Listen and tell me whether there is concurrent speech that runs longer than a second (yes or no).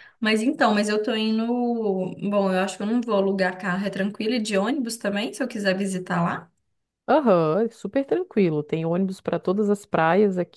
no